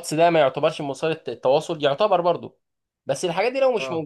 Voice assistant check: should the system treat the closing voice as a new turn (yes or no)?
no